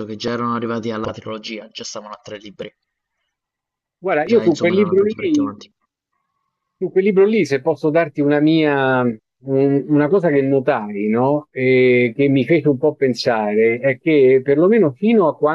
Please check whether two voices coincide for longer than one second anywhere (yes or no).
yes